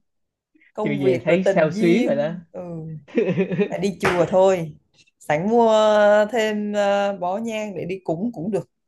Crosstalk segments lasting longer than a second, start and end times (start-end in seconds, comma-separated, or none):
0.8-2.3